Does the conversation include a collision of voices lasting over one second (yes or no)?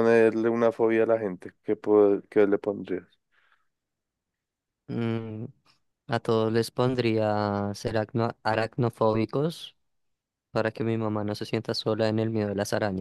no